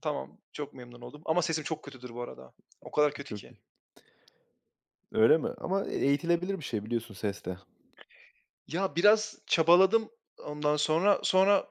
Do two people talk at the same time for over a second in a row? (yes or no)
no